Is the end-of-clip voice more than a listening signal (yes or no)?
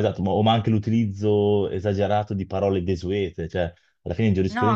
no